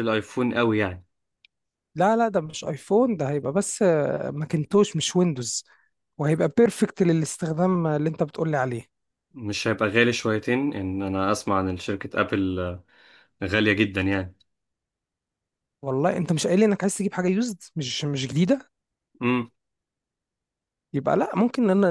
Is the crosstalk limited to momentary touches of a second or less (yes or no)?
yes